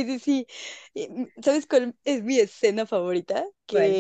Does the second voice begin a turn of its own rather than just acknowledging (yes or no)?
no